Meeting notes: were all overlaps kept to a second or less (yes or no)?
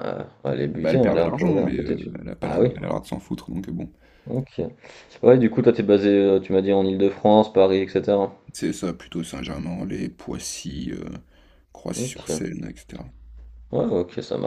no